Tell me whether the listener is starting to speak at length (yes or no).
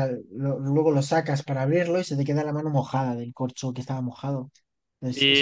yes